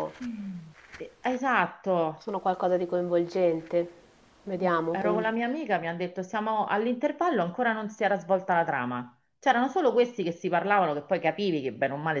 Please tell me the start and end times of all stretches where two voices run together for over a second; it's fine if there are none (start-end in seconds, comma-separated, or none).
none